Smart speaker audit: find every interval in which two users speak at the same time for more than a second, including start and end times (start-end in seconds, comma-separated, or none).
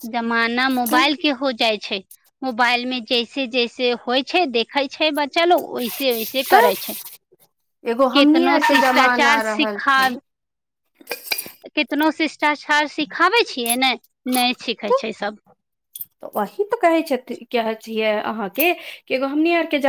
8.2-10.2